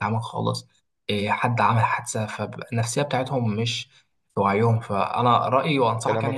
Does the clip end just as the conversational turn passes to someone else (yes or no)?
no